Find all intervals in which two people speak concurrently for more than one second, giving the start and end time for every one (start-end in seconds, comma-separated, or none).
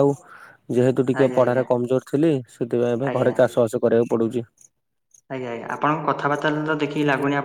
none